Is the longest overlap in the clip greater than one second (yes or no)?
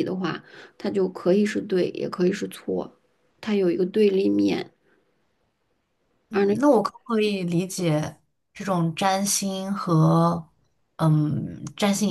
no